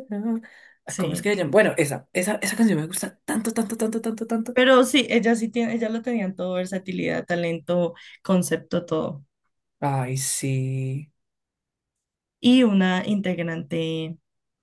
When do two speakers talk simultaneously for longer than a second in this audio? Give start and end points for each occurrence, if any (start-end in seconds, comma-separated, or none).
none